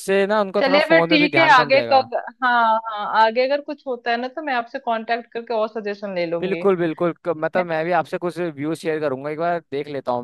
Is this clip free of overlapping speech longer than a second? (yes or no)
no